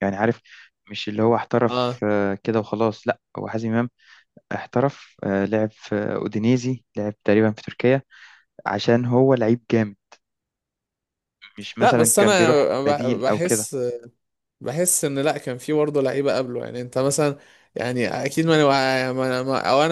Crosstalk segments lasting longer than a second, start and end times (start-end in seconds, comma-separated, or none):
11.8-13.7